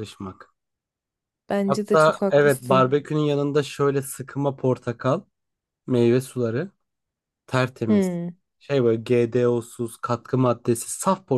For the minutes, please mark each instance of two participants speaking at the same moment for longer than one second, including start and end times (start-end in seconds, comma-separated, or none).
1.7-3.0